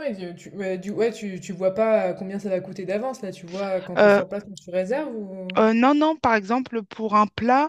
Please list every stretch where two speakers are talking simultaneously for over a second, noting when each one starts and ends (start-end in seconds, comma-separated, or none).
none